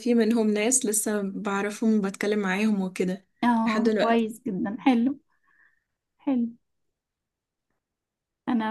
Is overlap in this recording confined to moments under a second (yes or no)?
yes